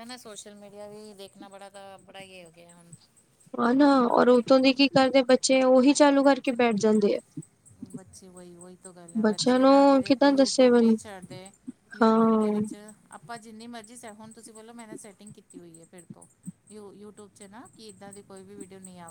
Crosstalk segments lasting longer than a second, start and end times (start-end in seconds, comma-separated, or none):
9.2-10.9